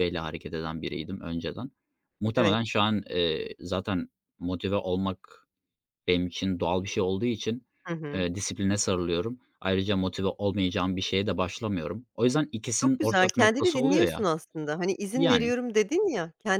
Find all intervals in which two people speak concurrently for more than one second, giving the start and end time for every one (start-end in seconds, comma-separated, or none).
12.7-14.3